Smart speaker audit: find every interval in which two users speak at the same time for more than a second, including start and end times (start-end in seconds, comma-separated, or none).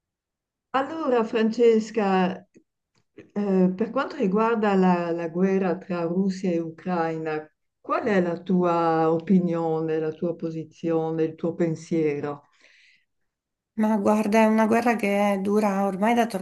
none